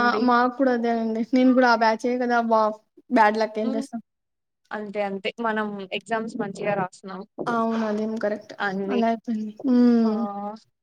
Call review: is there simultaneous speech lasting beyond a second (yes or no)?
no